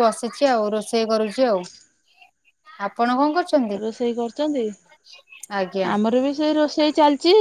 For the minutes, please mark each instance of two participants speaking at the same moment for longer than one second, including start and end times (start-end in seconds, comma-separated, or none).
none